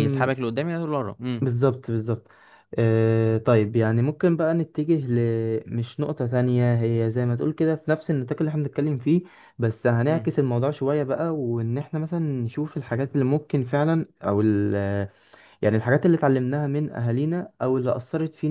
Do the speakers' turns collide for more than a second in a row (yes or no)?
no